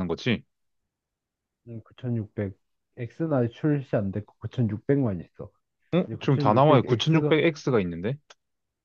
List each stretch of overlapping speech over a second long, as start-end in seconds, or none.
6.0-7.3